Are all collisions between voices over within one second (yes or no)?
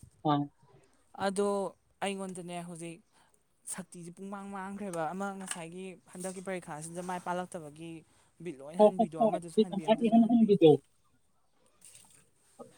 no